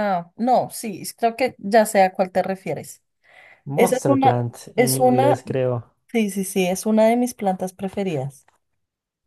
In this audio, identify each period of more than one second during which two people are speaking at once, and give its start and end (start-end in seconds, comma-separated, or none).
3.8-5.4